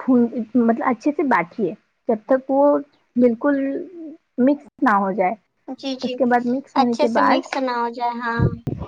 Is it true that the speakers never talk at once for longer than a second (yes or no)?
yes